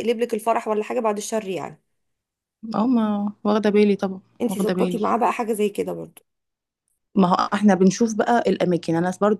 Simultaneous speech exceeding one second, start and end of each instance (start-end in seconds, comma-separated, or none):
none